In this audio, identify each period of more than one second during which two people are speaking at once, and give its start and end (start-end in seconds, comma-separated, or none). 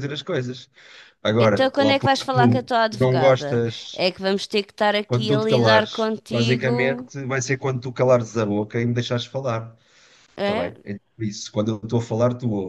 1.4-4.0, 5.1-7.1